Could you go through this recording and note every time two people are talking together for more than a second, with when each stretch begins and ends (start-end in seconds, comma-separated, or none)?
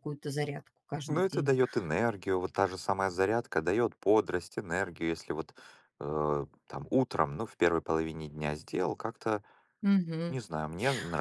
none